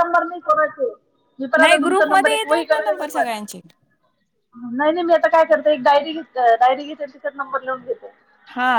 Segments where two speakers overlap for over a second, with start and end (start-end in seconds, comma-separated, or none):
1.6-3.3